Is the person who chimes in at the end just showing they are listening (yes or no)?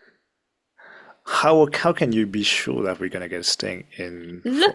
no